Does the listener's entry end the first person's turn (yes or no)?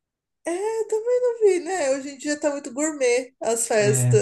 no